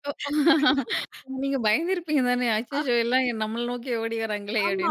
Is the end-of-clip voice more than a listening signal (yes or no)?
yes